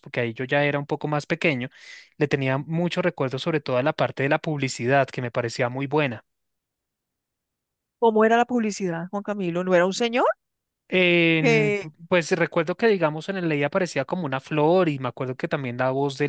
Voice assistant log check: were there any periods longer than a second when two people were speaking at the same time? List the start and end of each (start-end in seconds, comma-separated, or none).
none